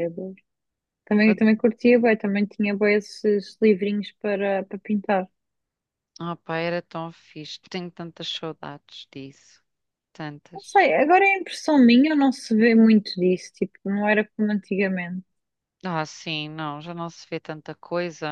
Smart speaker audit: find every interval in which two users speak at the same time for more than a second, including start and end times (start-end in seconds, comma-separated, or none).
none